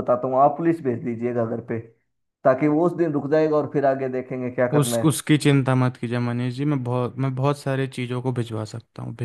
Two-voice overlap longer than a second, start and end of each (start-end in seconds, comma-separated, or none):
none